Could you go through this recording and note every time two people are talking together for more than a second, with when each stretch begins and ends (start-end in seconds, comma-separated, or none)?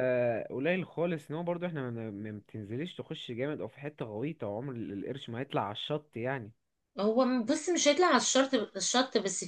none